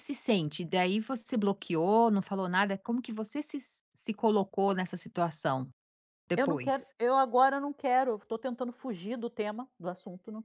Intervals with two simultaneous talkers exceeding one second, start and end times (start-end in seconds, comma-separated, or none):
none